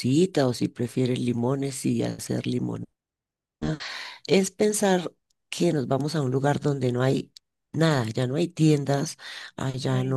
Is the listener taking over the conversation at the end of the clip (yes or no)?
no